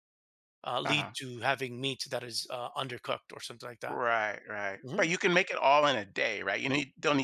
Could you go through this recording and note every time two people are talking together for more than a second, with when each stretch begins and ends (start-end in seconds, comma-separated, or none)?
none